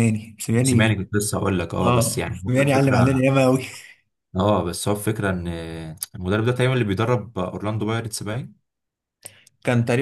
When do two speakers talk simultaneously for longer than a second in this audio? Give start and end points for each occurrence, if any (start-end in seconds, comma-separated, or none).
1.8-3.1